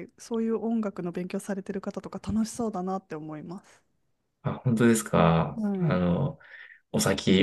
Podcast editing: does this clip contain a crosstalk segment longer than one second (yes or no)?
no